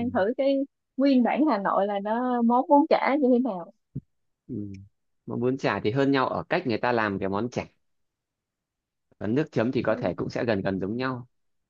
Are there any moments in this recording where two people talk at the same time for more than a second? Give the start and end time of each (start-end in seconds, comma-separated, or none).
none